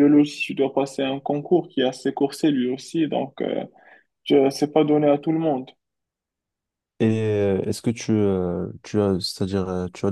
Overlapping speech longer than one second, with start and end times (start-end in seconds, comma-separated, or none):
none